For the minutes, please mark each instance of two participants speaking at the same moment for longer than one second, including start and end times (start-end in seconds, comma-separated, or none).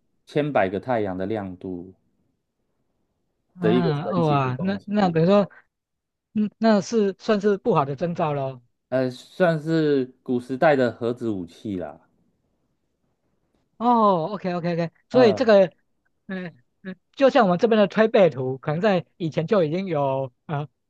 3.6-5.2